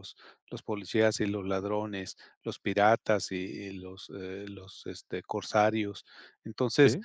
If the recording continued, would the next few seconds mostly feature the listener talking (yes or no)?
no